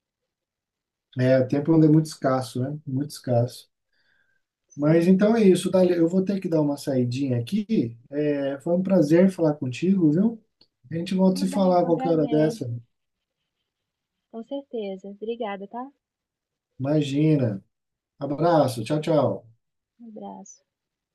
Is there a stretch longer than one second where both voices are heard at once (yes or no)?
yes